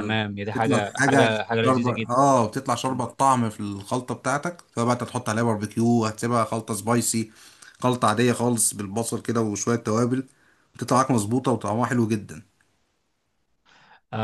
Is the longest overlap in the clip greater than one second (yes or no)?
yes